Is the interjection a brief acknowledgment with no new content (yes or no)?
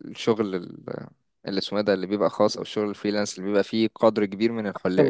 yes